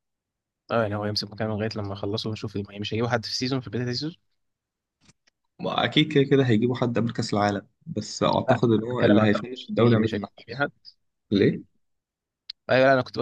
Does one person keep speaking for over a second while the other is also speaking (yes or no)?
yes